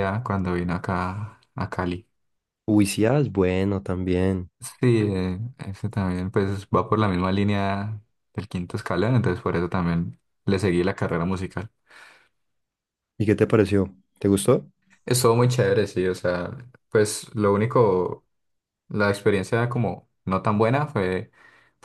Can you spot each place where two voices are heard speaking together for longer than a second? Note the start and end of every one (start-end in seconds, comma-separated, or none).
none